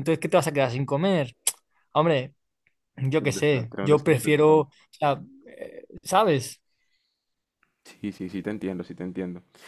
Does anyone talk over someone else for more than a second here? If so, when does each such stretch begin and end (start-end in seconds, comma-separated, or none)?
3.2-4.7